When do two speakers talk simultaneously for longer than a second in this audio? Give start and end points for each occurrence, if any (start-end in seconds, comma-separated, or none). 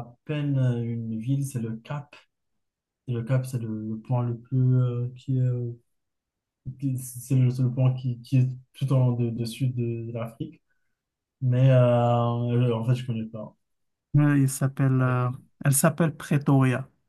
none